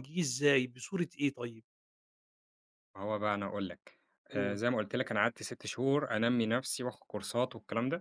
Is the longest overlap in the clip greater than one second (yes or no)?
no